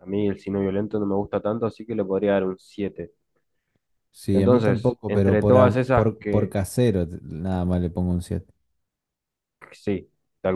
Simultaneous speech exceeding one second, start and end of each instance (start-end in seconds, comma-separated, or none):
4.3-6.5